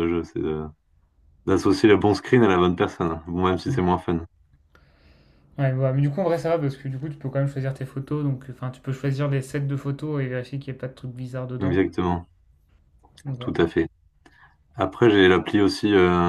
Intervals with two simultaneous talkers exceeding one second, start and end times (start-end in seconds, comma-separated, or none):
none